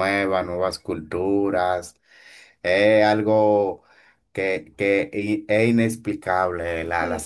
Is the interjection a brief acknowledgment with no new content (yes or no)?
yes